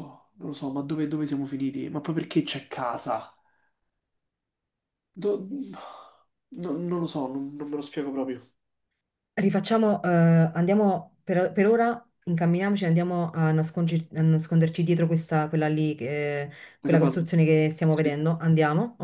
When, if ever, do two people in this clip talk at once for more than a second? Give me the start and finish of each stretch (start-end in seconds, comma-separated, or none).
none